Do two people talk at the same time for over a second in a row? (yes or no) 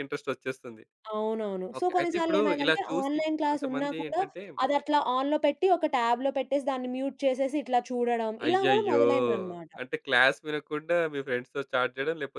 yes